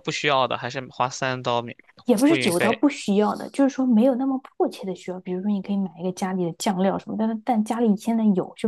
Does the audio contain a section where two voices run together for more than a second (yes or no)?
no